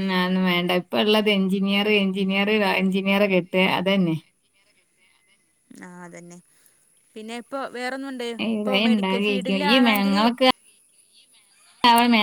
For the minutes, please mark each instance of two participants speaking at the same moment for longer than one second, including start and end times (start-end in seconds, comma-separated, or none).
8.5-10.2